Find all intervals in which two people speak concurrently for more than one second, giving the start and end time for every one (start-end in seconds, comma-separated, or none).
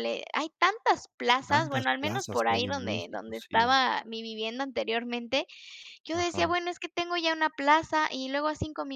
1.5-3.8